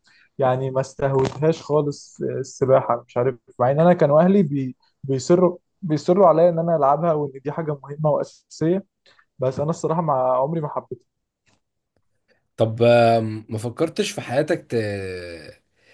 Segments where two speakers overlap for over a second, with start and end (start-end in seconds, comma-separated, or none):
none